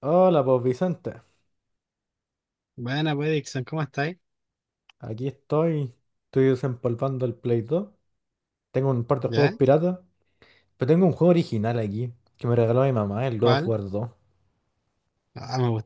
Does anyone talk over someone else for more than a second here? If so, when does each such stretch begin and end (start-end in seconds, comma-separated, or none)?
none